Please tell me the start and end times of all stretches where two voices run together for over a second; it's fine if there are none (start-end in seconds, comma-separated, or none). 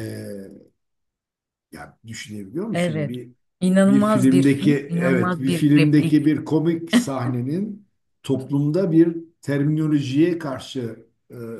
3.9-6.2